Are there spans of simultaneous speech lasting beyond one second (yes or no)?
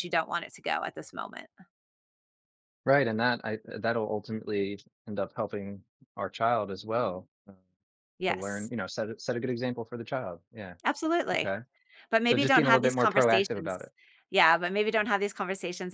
yes